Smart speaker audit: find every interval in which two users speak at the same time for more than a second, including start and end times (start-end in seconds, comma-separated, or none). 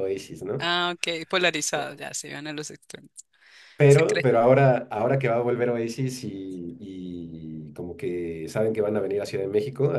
none